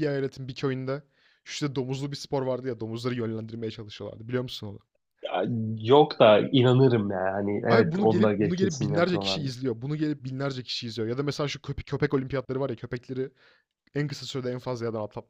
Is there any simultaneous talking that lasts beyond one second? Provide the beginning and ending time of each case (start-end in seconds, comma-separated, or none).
7.7-9.4